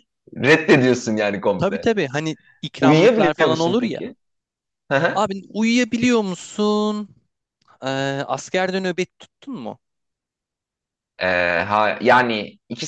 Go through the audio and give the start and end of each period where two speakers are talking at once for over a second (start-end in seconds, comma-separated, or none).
2.8-4.0